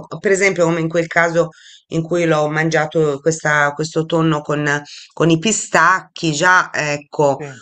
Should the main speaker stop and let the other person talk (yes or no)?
no